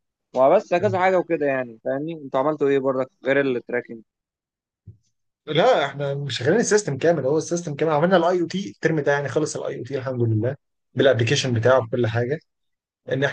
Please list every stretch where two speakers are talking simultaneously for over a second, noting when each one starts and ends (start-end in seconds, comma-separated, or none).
none